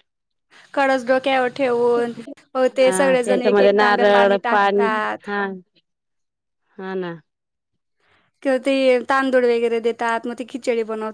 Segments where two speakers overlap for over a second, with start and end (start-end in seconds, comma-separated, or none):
2.8-4.4